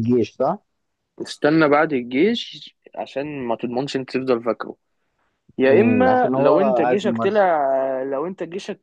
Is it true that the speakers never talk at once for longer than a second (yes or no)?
no